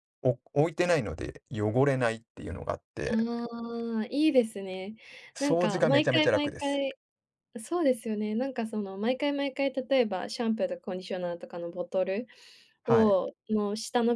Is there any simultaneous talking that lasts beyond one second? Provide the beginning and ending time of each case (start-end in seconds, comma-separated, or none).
5.4-6.8